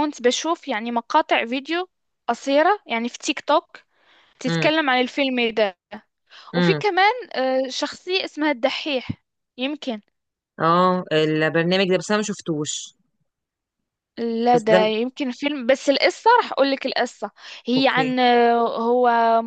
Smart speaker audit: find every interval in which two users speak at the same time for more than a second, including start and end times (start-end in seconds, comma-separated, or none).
none